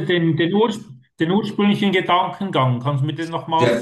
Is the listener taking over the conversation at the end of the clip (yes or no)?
yes